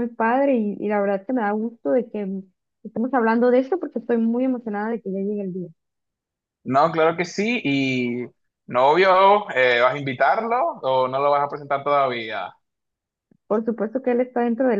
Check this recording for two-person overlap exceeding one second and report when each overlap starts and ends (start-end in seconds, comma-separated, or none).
none